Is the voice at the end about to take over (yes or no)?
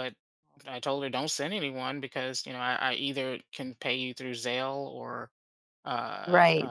yes